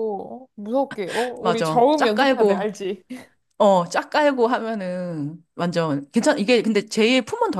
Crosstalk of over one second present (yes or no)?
yes